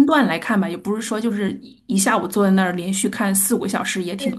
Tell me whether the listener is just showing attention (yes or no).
no